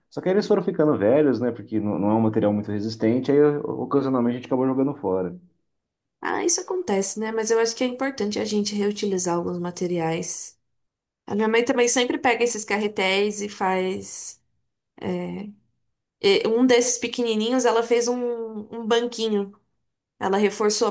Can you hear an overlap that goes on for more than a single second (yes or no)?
no